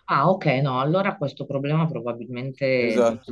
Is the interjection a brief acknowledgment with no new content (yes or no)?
no